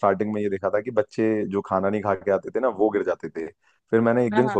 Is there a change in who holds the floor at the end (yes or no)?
no